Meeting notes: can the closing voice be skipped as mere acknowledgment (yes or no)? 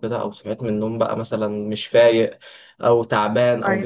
yes